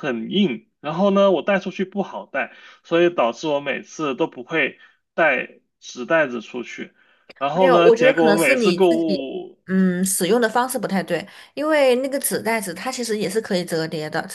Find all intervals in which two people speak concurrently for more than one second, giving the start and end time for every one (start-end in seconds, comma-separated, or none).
7.5-9.2